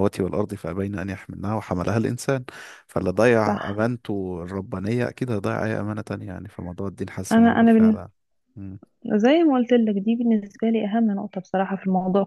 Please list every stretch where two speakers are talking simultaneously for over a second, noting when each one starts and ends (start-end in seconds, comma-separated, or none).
none